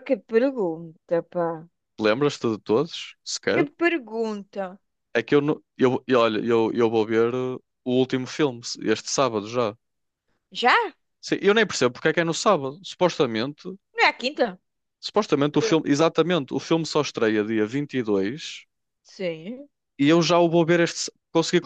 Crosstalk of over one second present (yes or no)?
no